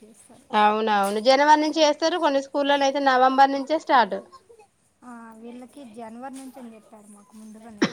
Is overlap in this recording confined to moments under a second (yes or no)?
yes